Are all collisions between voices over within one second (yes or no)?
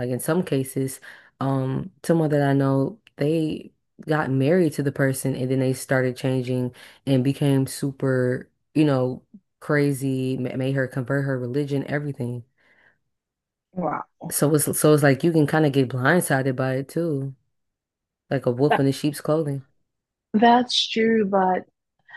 yes